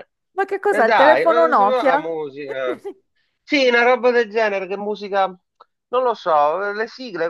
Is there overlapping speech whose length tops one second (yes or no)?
yes